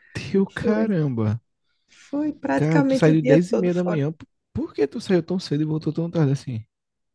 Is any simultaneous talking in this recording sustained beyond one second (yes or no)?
yes